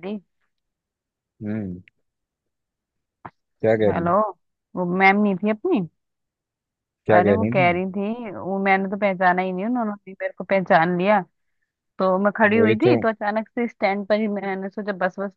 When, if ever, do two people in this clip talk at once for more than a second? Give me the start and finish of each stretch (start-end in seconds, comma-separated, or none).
none